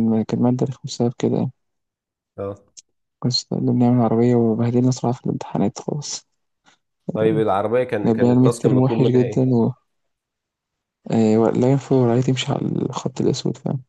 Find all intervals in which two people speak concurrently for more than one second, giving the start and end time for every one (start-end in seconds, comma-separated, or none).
8.1-9.4